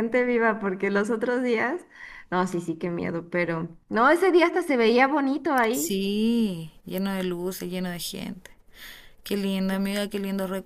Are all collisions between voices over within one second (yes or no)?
yes